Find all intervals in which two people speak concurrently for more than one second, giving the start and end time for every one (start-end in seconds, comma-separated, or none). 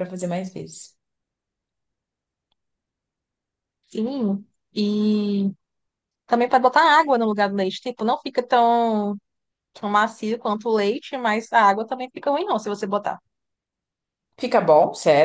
none